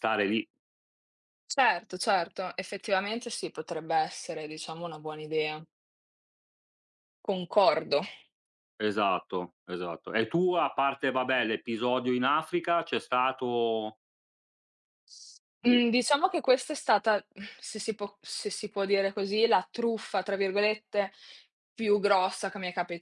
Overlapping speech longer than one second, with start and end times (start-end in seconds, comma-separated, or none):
none